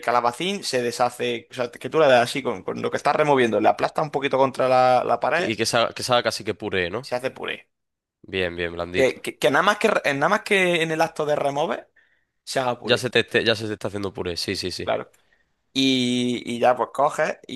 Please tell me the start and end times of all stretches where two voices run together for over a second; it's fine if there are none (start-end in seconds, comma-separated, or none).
none